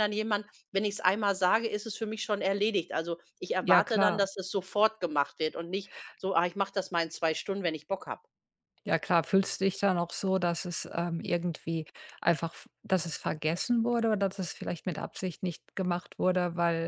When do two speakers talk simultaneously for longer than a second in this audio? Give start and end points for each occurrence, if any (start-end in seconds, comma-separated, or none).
none